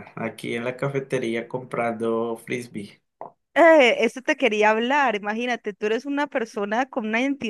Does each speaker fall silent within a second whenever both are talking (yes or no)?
yes